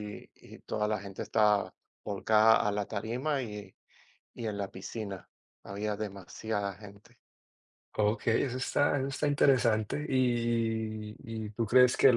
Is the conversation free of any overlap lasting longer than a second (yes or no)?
yes